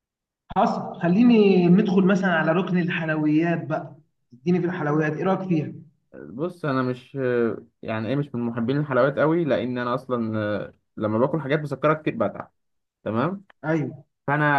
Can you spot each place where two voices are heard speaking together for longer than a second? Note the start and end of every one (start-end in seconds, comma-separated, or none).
none